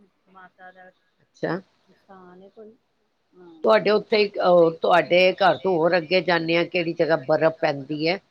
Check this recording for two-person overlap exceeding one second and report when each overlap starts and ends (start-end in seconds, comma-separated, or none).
none